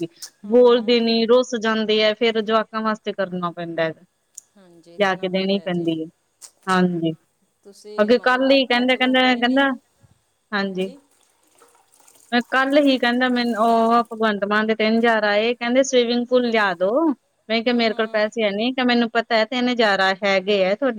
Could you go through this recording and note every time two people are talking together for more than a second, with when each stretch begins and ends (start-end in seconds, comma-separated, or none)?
4.6-5.8, 8.0-9.7